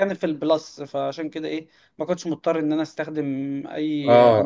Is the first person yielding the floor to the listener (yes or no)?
yes